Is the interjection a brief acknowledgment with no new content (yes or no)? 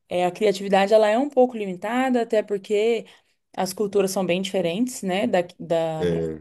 yes